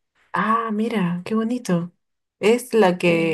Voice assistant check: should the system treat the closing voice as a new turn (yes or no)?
no